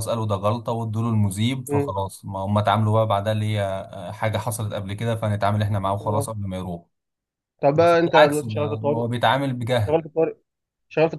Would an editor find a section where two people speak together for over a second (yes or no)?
yes